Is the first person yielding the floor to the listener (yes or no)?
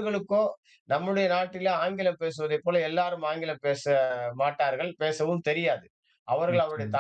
no